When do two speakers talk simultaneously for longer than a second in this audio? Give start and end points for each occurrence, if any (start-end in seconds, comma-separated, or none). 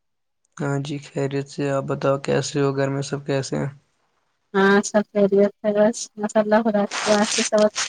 none